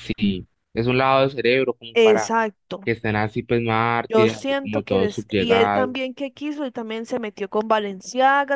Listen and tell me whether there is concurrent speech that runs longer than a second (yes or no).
yes